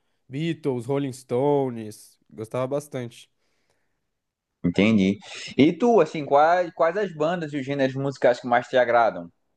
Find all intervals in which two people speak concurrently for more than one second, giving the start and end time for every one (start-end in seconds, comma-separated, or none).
none